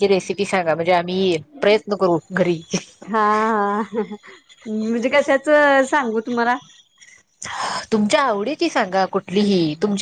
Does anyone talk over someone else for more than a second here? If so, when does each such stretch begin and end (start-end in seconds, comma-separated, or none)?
none